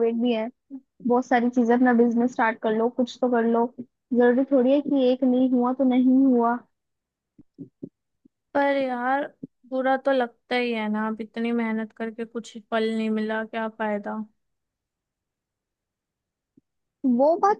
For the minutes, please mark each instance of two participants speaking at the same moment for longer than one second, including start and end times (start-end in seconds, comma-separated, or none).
none